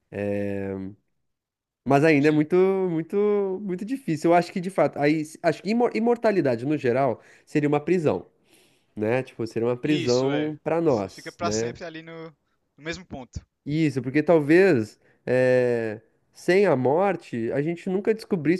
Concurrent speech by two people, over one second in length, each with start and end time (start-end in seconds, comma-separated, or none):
9.8-11.8